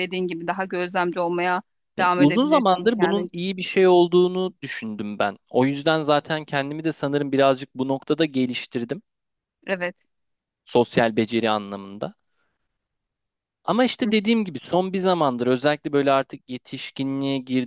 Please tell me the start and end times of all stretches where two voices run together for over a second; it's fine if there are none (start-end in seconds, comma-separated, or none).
2.0-3.3